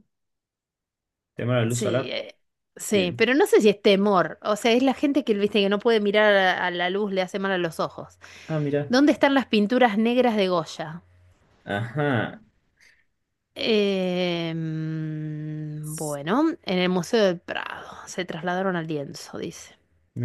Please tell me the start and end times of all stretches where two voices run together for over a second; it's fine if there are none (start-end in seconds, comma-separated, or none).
none